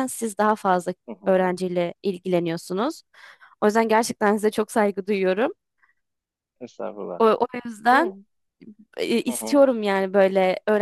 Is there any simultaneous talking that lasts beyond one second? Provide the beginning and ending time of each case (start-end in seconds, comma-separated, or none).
none